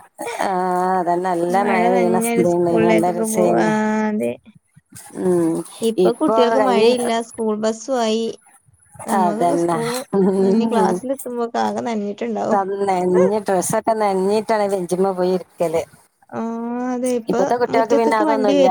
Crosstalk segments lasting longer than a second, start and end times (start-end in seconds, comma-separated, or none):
1.9-3.7